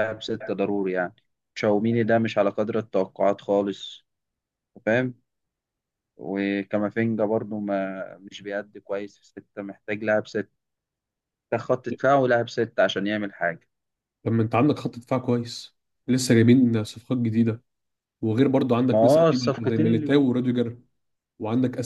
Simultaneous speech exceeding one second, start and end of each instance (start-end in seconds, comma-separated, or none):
18.9-20.6